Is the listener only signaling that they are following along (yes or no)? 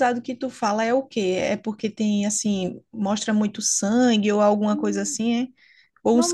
no